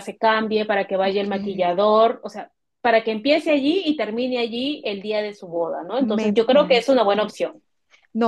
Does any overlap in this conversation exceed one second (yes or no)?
yes